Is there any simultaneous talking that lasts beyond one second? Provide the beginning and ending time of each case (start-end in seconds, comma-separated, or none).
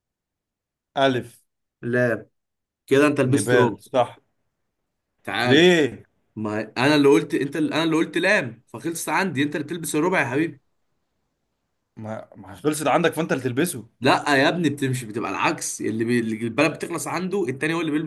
none